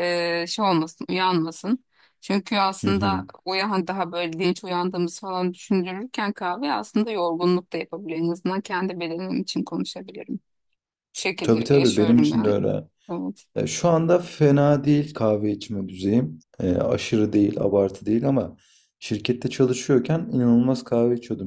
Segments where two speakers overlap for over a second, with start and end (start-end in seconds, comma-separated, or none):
11.4-12.7